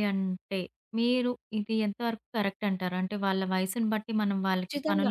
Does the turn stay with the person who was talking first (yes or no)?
no